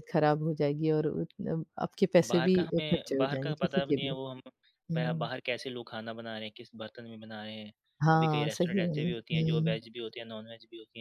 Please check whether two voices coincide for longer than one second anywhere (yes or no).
yes